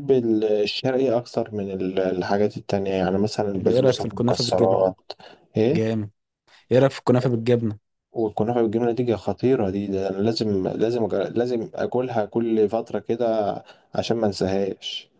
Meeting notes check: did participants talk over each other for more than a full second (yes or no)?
yes